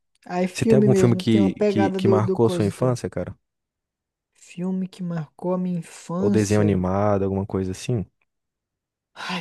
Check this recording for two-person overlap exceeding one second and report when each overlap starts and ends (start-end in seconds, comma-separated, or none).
0.5-3.0